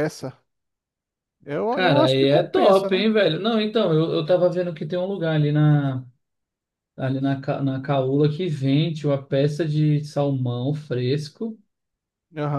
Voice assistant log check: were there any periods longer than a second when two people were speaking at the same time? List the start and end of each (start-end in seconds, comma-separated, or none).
1.7-3.1